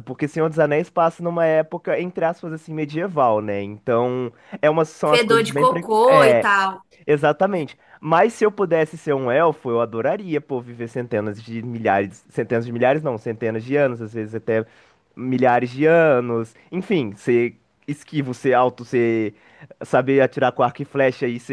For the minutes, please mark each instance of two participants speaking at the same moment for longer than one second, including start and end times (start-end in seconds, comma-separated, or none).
5.0-6.5